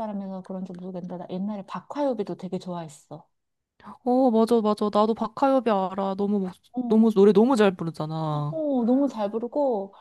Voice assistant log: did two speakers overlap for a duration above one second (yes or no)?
no